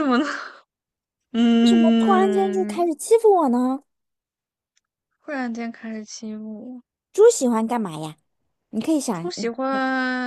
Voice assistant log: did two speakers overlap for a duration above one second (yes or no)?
yes